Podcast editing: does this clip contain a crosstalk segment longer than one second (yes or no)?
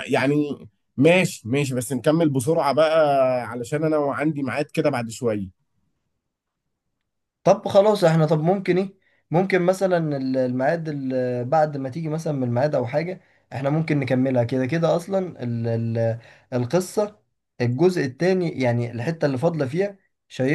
no